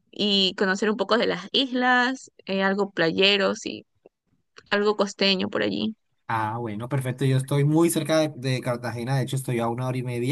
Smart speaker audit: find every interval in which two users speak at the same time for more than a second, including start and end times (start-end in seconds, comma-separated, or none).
none